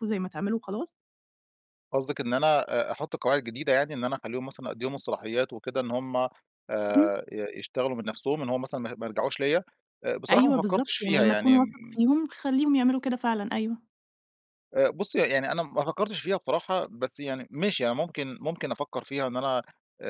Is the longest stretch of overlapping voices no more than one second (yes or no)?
no